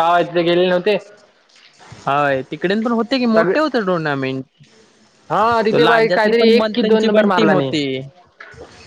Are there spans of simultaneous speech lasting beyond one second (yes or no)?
yes